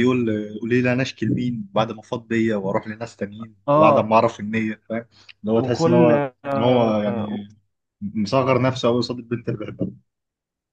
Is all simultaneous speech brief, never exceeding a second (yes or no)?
no